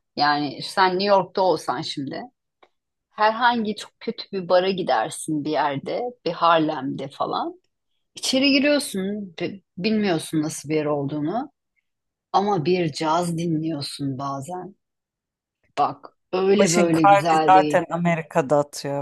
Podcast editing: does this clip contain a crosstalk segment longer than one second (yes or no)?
yes